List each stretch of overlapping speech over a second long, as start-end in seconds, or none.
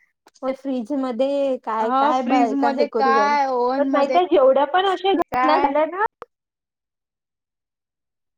1.8-4.2